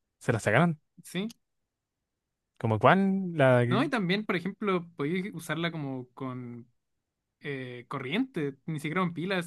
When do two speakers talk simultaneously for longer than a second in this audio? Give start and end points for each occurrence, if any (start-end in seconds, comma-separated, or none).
none